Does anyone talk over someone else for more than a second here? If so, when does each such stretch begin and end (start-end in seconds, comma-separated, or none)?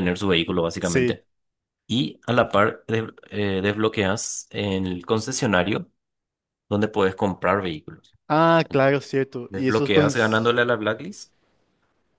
8.7-10.1